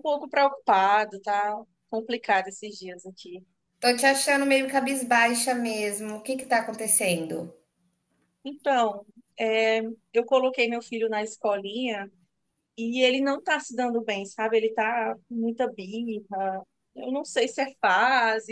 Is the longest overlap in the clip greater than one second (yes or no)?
no